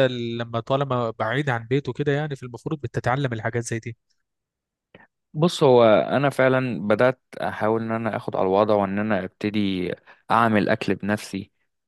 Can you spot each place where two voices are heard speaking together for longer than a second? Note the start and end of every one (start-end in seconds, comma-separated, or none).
none